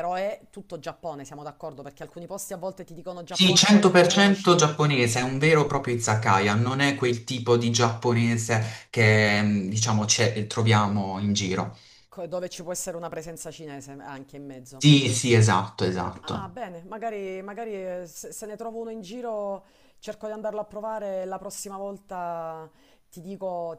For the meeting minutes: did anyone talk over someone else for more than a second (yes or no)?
yes